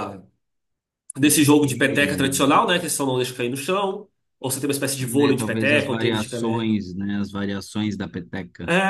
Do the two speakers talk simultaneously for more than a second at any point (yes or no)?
yes